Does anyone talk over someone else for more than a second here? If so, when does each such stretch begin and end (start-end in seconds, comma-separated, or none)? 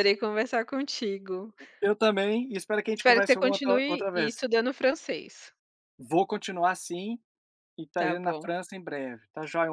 3.0-4.5